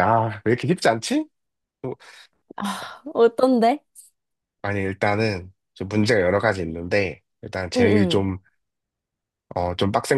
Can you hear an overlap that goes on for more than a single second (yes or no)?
no